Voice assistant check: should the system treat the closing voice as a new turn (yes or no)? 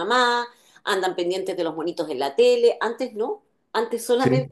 no